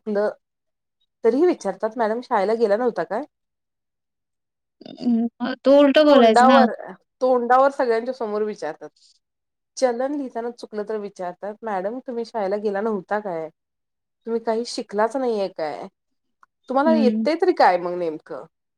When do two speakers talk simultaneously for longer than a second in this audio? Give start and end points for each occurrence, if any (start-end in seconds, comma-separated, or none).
none